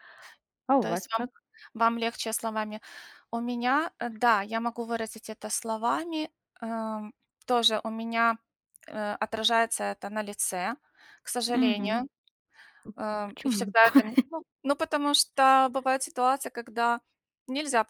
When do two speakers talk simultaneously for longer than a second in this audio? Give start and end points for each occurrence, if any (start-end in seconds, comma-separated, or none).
none